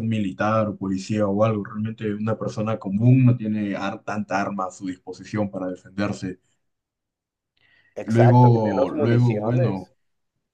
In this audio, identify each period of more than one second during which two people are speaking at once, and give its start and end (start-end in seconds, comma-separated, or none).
8.0-9.9